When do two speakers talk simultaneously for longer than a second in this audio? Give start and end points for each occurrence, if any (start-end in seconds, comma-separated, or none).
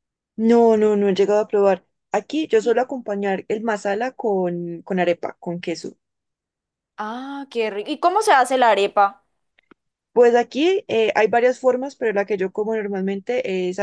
none